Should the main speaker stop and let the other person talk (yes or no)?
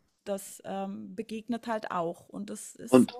yes